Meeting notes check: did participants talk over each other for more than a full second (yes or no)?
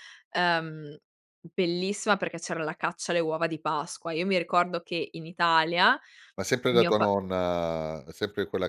no